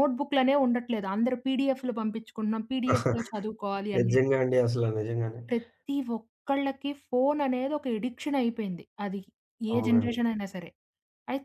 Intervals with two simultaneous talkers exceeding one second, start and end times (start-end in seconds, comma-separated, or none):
none